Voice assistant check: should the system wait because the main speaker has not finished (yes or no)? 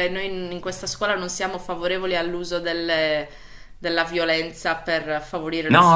no